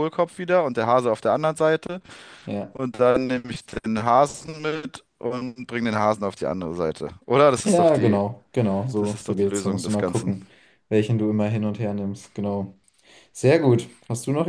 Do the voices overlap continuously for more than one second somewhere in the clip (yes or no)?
yes